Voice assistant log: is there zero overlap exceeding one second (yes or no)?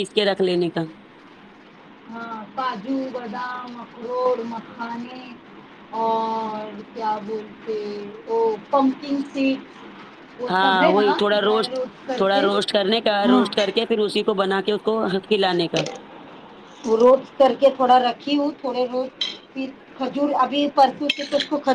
yes